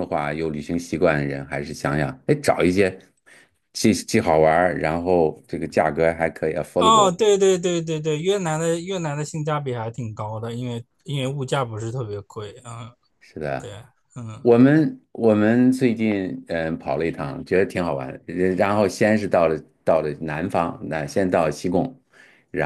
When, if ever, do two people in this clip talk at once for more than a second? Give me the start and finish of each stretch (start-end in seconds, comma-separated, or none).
none